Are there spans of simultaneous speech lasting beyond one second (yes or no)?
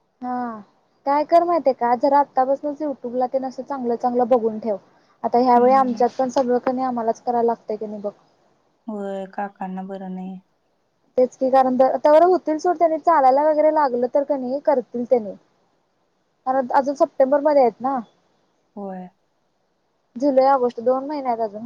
no